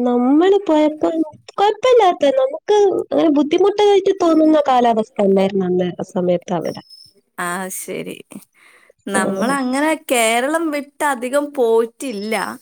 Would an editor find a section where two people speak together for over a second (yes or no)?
no